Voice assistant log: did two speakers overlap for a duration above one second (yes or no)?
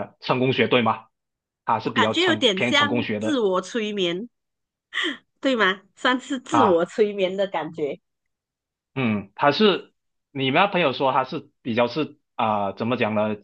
yes